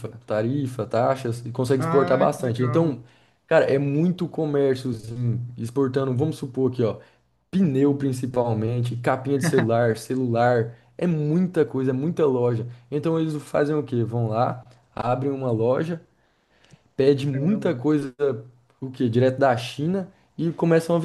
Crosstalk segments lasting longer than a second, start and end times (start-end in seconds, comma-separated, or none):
1.8-3.0